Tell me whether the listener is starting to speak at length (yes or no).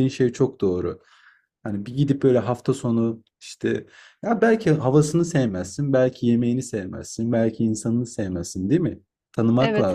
yes